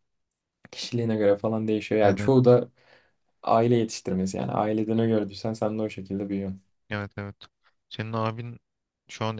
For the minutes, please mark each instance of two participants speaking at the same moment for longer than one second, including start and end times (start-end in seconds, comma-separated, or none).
none